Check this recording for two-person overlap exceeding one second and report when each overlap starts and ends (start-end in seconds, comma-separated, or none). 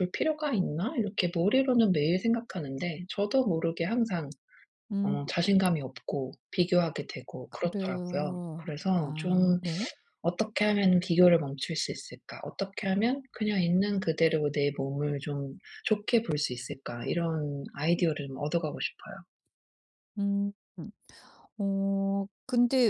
7.5-9.6